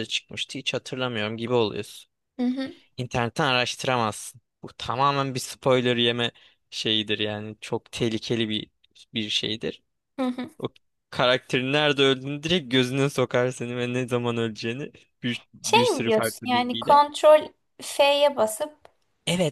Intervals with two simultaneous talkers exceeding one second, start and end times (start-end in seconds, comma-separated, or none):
15.6-17.0